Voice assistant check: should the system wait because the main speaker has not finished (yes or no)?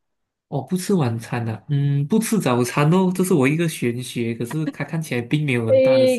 no